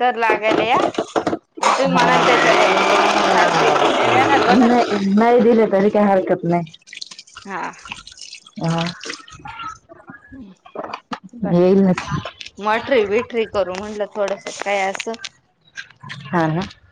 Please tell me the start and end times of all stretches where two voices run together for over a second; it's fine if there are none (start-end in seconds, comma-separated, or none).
none